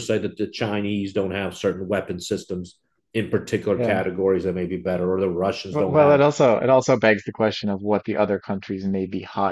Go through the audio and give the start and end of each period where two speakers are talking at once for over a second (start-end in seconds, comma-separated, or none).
none